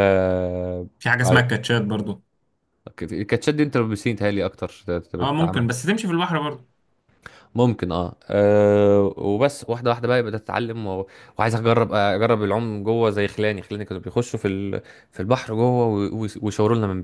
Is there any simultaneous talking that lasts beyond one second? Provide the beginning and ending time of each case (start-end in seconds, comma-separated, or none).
none